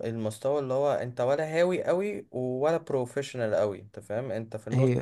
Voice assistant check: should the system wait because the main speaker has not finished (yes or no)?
yes